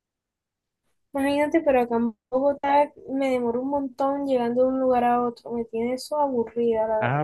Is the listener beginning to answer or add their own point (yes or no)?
yes